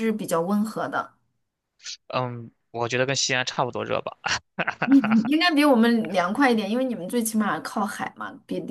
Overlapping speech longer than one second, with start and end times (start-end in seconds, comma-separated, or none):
none